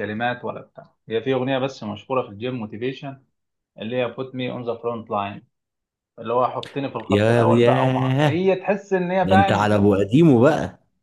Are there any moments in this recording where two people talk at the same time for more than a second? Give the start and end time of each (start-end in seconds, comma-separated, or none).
7.1-8.5